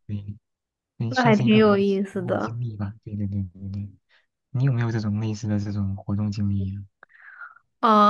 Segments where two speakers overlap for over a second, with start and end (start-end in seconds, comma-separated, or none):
1.1-2.6